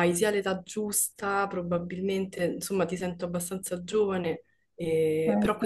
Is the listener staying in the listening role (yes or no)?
yes